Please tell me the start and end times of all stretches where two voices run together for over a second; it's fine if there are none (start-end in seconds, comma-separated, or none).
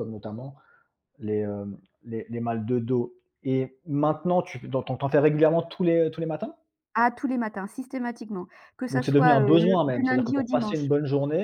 8.9-10.9